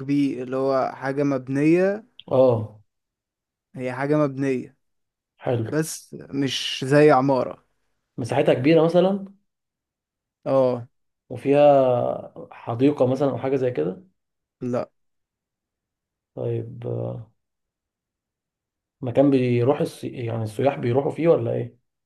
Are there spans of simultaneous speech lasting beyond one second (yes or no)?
no